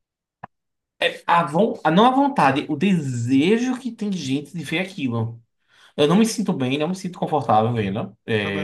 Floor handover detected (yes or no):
no